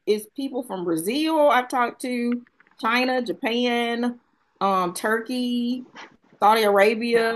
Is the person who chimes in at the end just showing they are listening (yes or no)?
yes